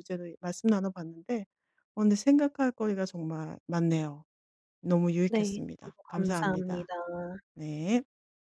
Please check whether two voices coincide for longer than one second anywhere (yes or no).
yes